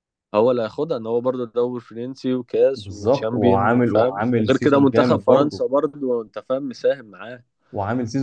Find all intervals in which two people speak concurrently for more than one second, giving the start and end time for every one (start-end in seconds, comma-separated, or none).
2.8-5.6